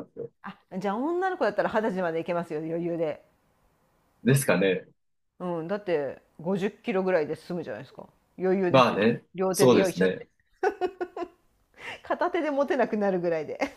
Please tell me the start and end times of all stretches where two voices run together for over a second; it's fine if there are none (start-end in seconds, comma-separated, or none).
8.7-10.2